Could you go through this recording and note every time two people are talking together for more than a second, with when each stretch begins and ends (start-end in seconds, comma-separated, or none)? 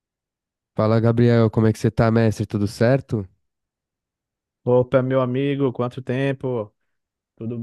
none